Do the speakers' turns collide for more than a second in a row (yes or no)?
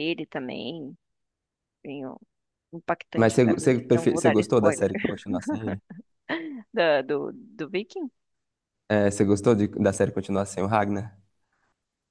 yes